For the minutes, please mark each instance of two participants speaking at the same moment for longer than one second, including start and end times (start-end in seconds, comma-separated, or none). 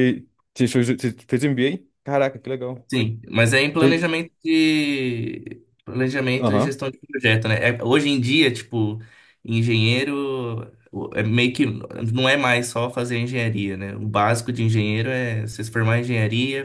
none